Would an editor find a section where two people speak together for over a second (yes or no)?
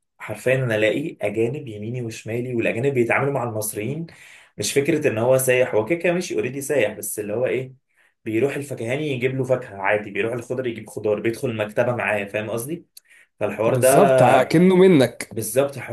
no